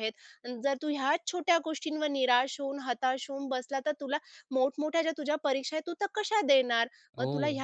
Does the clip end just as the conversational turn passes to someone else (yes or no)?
no